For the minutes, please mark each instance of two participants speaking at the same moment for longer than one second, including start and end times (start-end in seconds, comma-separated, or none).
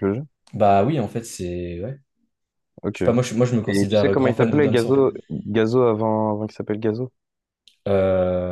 3.7-5.1